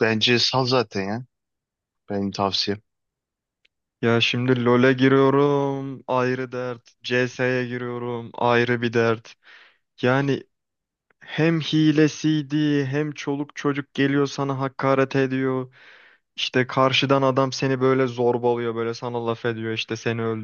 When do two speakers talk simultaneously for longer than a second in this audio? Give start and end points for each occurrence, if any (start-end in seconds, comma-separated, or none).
none